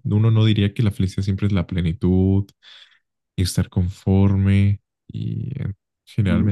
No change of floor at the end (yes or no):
no